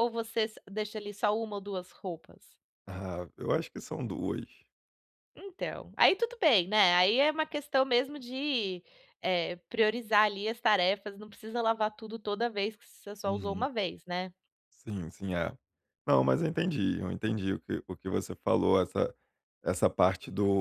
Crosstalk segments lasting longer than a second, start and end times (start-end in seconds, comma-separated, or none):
none